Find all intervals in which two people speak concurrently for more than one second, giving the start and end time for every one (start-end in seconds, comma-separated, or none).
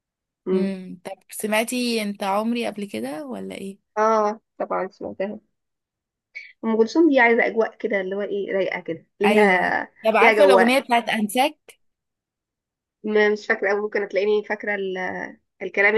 9.2-10.8